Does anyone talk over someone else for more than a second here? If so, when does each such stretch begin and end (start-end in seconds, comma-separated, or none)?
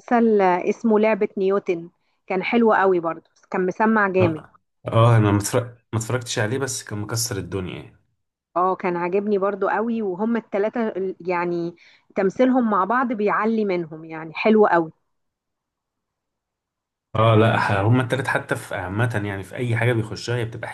none